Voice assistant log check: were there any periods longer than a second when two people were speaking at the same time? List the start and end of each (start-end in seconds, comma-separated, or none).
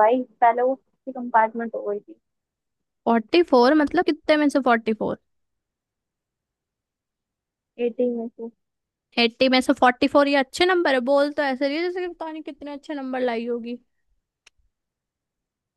none